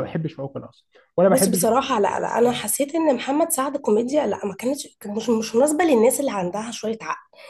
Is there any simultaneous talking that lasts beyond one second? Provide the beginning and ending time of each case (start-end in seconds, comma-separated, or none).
none